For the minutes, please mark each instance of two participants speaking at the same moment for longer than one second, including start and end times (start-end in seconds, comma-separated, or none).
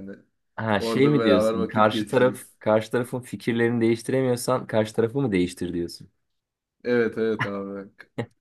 0.8-2.5